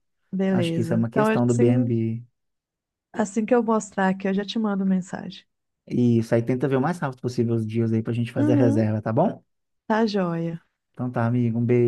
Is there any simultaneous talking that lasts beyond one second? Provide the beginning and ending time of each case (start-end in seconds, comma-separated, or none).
0.5-1.9